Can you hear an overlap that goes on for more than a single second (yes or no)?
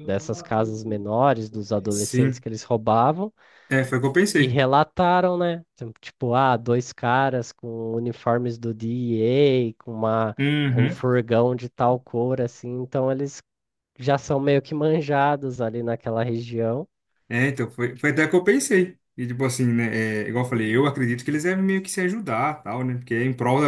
no